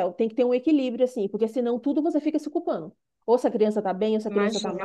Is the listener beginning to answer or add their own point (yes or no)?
no